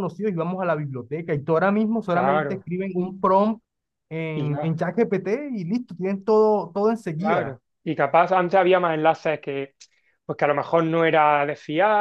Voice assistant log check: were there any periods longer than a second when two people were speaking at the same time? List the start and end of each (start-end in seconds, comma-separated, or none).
none